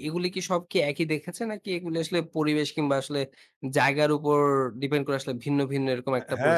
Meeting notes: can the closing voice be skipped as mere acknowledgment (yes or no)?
no